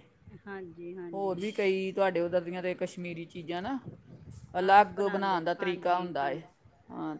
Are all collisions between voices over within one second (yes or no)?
no